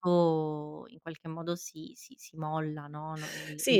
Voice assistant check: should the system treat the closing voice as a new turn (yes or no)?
yes